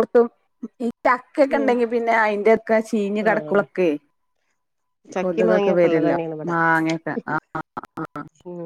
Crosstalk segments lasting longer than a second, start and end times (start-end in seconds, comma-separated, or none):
none